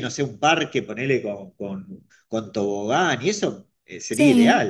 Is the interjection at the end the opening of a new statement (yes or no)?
yes